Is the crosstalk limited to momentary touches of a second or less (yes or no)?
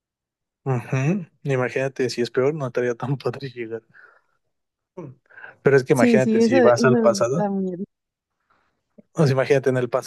no